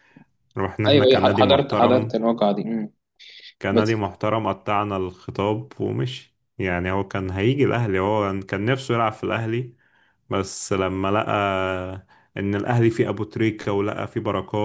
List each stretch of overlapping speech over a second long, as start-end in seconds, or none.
0.9-2.2